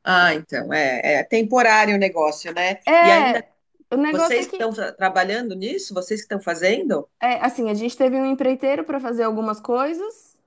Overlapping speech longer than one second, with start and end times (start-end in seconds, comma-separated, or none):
none